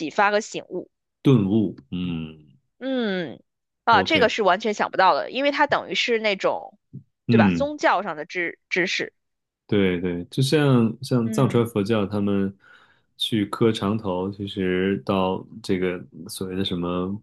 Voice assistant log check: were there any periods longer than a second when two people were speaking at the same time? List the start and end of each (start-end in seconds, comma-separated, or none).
none